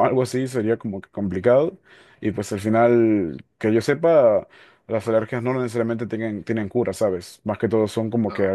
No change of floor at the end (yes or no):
yes